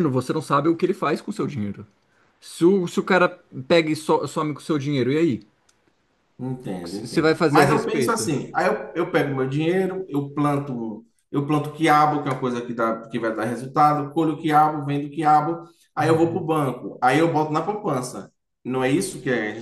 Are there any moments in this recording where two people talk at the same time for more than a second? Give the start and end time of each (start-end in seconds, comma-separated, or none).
6.6-8.3